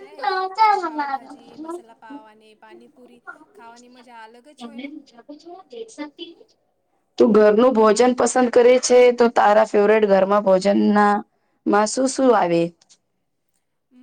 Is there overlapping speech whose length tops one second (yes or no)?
no